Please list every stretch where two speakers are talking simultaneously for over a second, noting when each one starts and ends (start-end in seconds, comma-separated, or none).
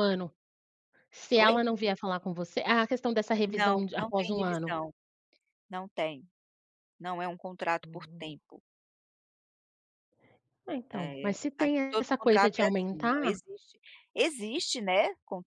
3.5-4.7, 10.9-13.4